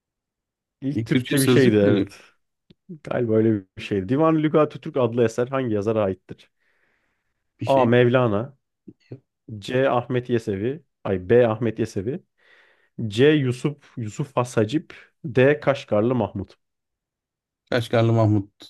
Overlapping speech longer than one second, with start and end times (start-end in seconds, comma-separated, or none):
0.9-2.1